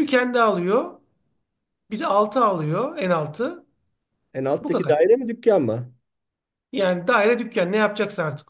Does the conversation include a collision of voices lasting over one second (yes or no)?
no